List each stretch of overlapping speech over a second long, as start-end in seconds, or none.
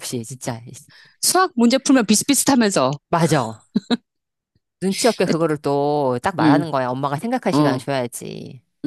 none